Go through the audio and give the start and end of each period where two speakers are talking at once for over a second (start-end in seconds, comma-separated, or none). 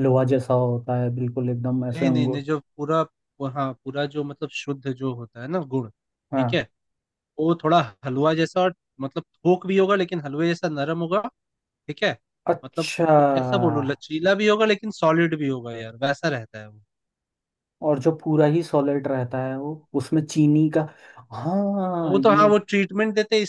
none